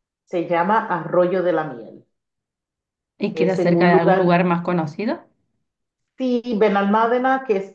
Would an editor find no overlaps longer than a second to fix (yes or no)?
no